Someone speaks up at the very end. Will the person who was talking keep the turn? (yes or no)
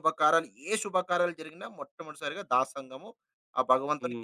no